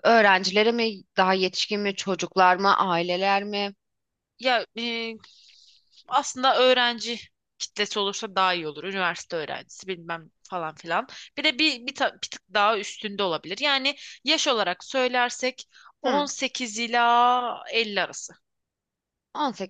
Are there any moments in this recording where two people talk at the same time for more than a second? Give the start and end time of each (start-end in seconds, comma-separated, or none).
none